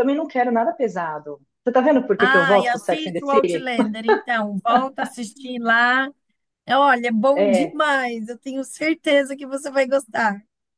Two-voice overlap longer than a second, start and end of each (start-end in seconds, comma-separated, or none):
2.2-3.7